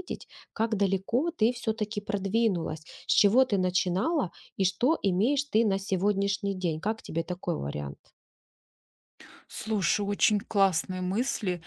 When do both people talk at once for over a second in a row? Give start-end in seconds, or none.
none